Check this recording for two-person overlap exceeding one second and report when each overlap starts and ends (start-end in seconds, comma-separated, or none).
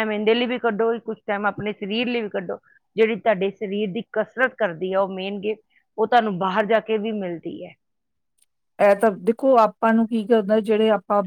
none